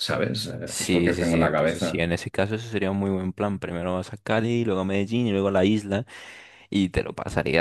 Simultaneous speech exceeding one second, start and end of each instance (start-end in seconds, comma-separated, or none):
0.7-2.0